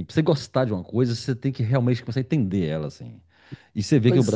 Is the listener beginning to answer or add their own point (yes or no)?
no